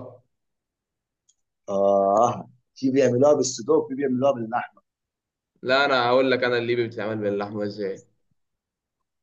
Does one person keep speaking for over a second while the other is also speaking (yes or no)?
no